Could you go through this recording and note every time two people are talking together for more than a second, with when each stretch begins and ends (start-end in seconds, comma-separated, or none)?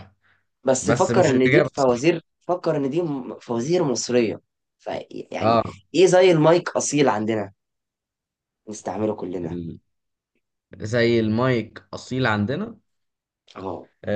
0.8-2.1